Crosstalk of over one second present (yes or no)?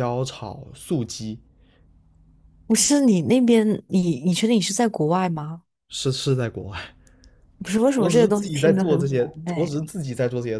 yes